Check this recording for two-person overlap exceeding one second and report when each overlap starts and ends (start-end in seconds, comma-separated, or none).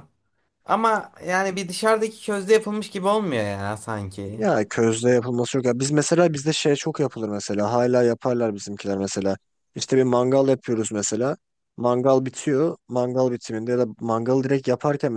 none